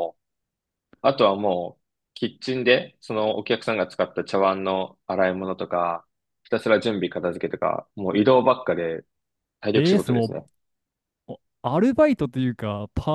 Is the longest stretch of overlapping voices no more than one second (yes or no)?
yes